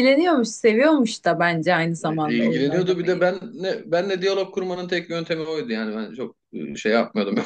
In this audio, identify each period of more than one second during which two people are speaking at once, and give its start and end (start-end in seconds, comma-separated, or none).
2.0-3.3